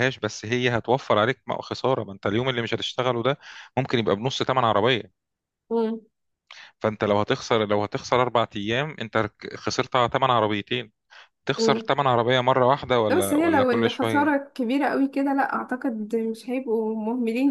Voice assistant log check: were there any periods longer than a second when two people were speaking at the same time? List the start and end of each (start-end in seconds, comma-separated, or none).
13.1-14.3